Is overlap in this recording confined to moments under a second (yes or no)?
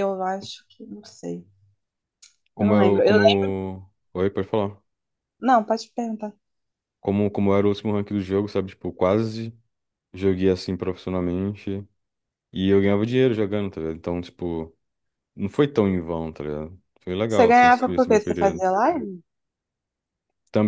no